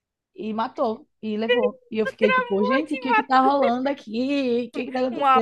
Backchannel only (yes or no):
no